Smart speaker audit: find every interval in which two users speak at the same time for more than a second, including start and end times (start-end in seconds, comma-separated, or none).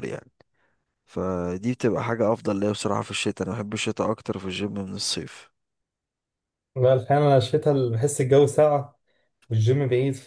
none